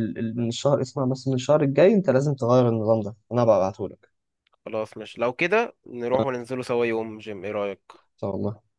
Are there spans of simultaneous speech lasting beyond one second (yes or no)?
no